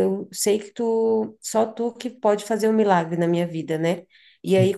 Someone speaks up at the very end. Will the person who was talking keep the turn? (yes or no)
yes